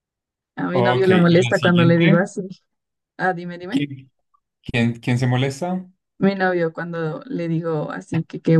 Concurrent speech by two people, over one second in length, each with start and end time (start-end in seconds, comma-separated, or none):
0.7-2.3